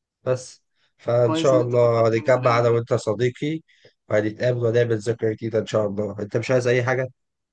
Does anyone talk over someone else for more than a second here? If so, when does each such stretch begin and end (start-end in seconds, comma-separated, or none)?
1.2-2.8